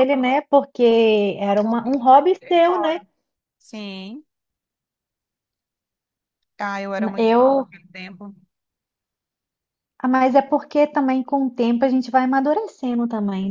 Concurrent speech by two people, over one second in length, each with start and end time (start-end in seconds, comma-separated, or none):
1.4-3.0